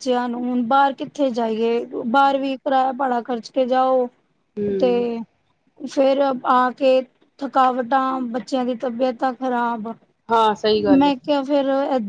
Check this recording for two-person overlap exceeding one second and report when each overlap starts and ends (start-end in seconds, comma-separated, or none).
none